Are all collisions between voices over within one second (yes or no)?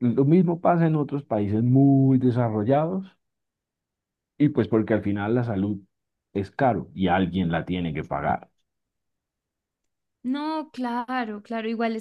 yes